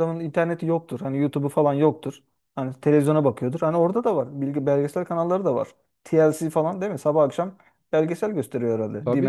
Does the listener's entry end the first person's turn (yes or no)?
yes